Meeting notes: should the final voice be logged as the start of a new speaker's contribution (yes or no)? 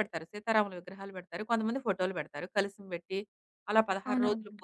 no